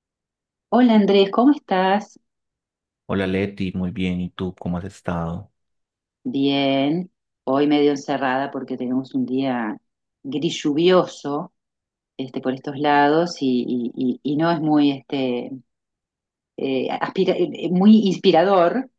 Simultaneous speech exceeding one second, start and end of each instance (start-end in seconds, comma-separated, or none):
none